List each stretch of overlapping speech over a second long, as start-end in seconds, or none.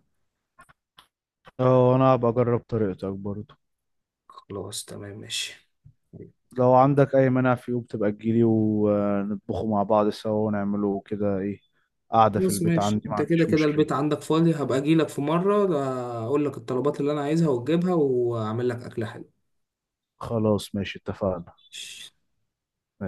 12.2-13.9